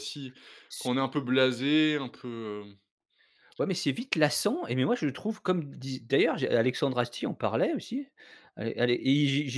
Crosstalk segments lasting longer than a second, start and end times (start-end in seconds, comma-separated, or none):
none